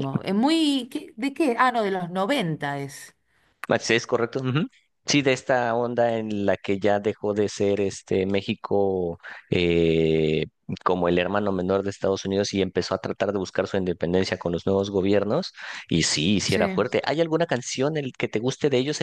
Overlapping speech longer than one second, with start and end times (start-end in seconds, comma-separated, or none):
none